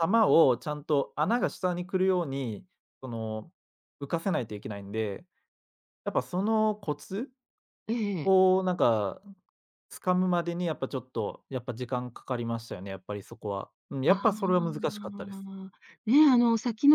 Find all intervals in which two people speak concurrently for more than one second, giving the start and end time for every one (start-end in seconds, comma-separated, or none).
14.1-15.4